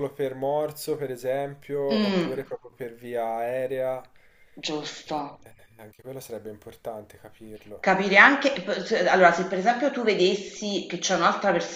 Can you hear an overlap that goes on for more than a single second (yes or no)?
no